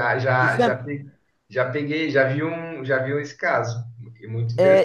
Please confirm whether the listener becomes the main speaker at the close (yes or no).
yes